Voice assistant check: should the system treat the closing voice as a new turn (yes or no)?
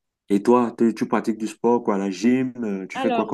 yes